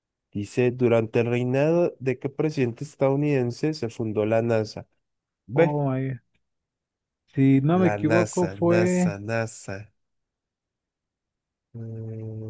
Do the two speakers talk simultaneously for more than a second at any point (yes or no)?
yes